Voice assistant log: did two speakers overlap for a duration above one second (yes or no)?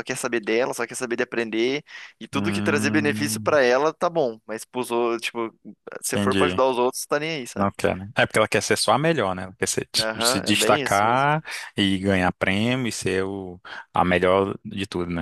yes